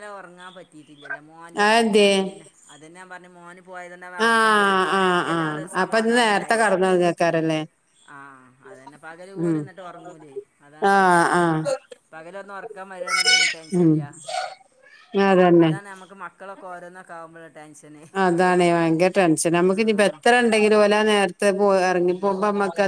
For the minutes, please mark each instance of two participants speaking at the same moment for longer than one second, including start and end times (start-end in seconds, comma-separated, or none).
4.2-6.7